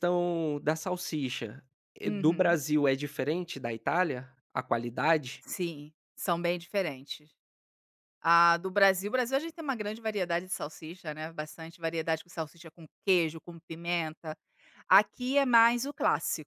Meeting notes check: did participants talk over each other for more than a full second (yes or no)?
no